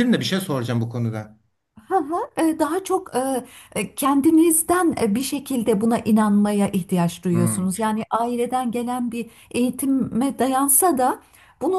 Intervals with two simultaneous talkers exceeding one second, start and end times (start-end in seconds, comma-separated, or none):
none